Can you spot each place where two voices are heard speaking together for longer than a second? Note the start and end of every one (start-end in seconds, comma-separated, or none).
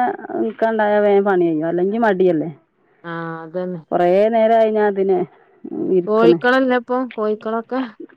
none